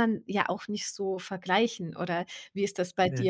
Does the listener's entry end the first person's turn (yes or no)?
no